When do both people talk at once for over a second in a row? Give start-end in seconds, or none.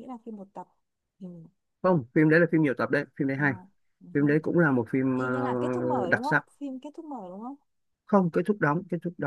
5.2-6.5